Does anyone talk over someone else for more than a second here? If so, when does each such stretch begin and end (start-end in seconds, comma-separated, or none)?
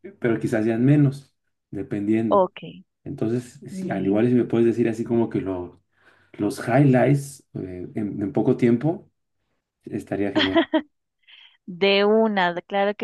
none